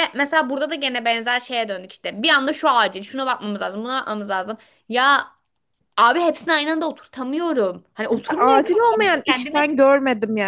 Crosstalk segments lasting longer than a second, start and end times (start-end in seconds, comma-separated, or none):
8.4-9.6